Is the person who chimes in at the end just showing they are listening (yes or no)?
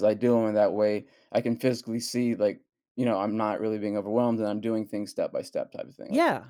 no